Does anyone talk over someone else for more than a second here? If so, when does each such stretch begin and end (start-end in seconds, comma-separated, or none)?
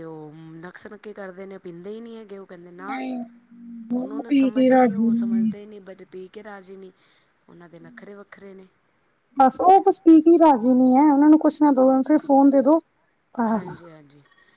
4.0-5.5